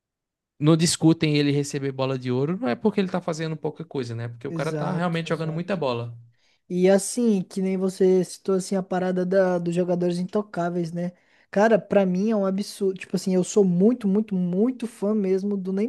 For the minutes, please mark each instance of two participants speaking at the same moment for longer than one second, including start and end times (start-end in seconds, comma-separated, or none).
4.5-5.8